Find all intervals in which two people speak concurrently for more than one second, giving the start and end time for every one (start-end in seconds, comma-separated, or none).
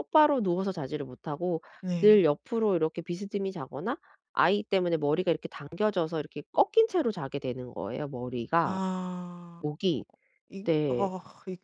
none